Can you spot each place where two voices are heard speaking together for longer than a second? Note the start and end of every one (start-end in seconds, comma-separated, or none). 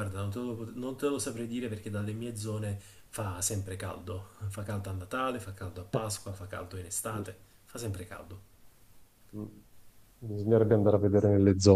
none